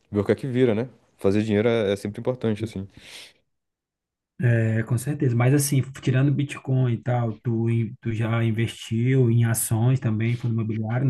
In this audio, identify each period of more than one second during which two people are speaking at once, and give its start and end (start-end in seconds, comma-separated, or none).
none